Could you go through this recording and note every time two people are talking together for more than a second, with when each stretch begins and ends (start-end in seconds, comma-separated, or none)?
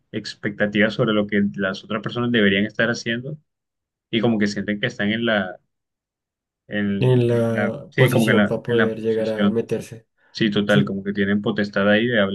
7.0-9.6